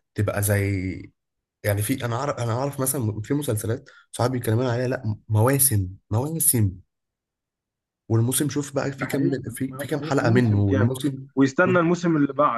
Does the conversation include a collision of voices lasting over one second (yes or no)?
yes